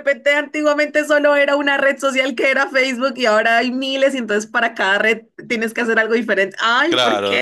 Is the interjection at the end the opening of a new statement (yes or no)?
yes